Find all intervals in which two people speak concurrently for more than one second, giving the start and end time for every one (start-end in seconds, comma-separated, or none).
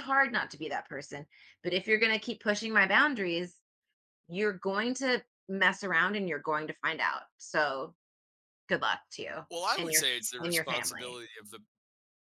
9.5-11.2